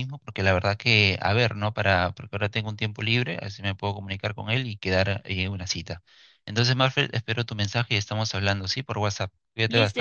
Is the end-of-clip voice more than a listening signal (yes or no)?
yes